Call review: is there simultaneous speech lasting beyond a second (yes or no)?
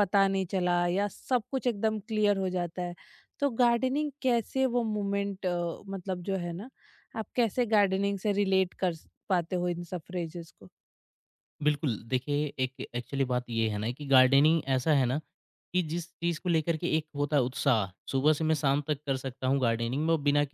no